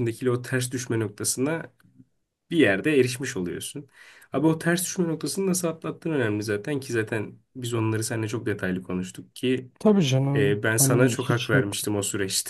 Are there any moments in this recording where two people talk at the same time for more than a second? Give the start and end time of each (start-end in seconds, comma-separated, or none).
10.3-11.8